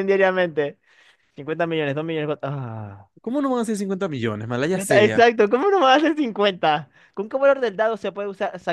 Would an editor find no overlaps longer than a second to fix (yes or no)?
yes